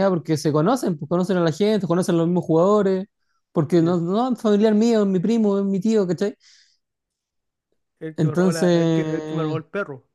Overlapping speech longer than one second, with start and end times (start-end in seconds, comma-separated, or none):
8.2-9.6